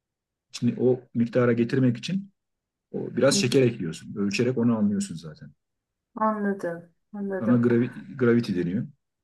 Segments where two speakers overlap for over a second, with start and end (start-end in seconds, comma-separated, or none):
none